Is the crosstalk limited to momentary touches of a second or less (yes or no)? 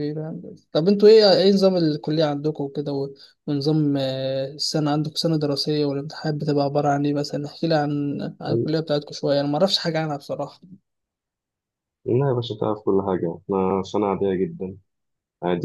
yes